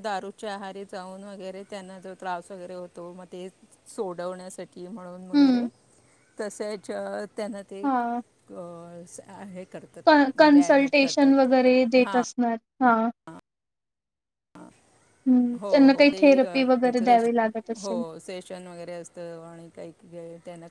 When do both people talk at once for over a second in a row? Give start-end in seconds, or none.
10.4-12.2, 15.6-17.3